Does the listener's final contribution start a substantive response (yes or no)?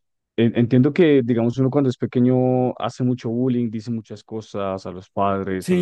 yes